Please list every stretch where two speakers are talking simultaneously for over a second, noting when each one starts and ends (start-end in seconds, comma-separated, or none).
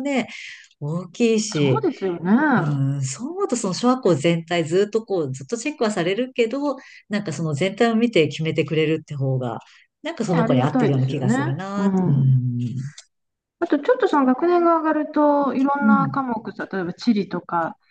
10.3-12.3